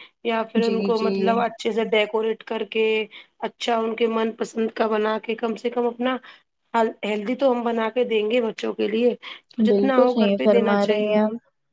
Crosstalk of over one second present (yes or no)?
yes